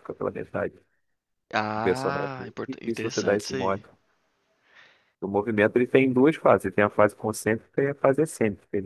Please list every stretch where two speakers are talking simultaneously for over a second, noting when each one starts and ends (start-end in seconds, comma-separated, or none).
1.8-3.8